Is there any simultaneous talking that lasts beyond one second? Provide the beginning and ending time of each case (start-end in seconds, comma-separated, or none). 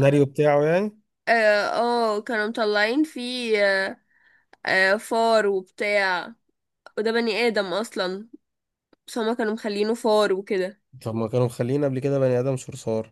none